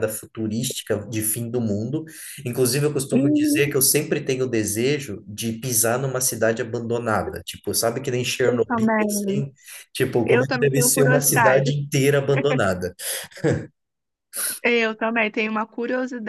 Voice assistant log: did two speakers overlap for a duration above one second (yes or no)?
yes